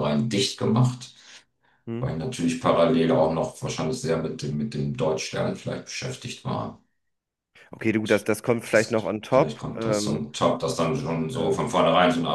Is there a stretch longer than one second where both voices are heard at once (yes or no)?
yes